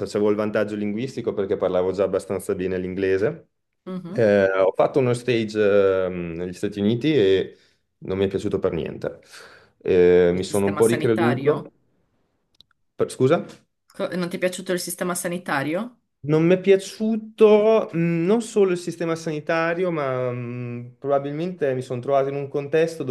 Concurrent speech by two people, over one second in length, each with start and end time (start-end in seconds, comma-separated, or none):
10.3-11.7